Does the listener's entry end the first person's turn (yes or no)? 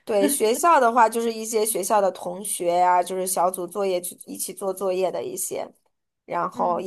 no